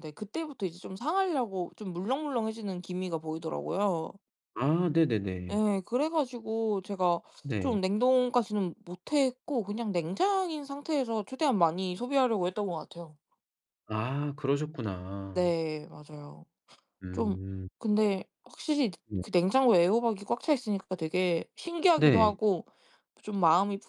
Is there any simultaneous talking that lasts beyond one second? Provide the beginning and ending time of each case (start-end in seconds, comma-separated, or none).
none